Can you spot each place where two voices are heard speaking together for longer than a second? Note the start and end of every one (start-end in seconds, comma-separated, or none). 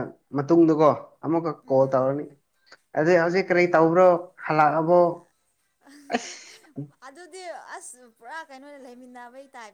none